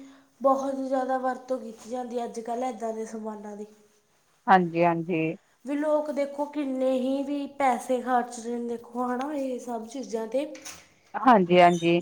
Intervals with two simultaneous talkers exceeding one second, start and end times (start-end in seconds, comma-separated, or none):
none